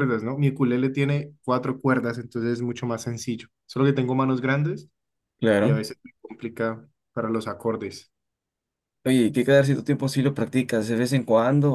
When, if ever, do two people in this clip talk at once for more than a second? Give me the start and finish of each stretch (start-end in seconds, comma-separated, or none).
none